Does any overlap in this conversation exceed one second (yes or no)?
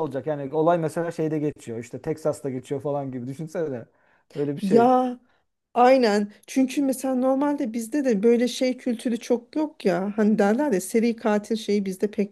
no